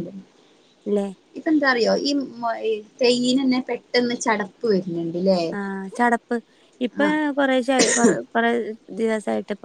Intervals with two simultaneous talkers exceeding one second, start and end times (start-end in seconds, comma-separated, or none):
none